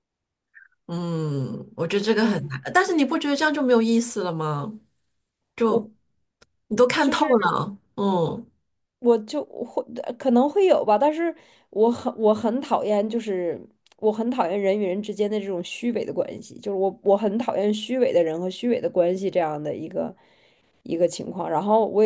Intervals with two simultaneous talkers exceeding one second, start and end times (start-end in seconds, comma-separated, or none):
none